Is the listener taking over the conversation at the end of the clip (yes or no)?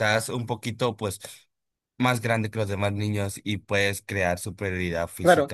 yes